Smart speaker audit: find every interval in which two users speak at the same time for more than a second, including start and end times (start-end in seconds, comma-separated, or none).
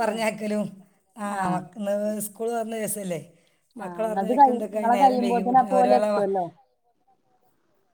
3.8-6.0